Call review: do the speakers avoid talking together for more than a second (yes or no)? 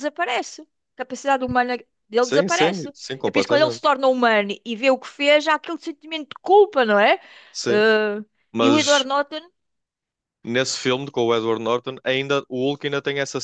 no